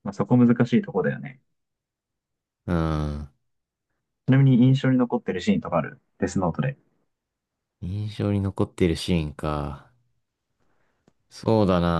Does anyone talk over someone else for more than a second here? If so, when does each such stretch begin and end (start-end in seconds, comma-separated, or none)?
none